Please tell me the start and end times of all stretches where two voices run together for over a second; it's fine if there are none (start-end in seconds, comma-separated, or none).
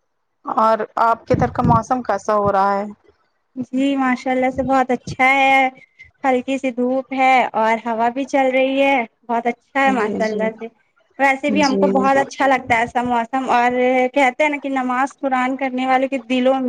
none